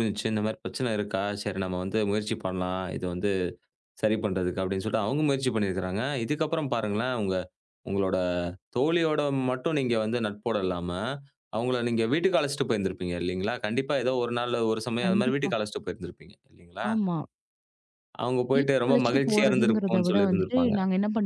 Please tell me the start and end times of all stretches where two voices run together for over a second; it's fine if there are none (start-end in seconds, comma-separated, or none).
18.5-20.7